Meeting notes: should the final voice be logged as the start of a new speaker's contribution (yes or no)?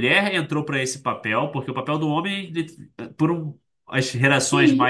no